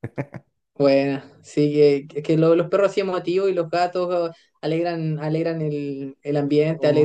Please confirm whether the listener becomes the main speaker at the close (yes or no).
no